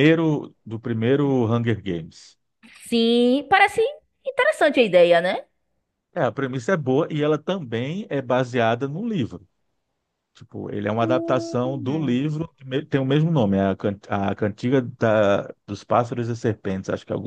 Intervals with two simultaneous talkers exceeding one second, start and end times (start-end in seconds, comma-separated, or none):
11.0-12.2